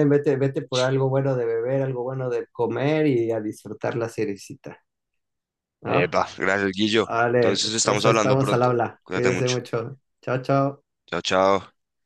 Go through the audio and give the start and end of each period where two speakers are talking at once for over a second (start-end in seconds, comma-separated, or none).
7.0-9.6